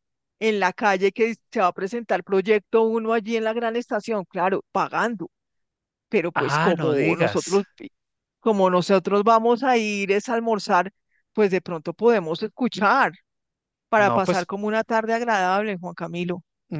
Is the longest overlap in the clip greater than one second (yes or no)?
yes